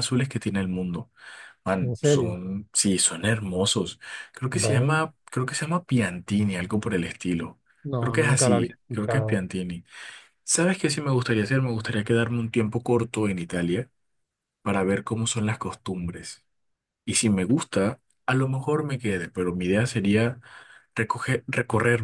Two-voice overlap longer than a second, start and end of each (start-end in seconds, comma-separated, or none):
8.0-9.4